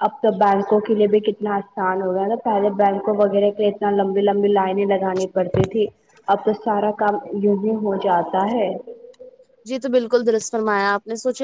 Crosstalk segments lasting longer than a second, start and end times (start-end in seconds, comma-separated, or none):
none